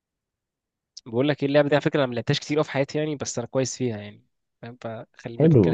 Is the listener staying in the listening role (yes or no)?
no